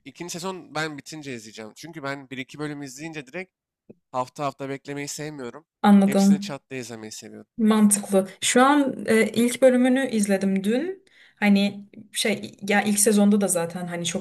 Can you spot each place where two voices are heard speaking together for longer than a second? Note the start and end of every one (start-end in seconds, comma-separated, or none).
none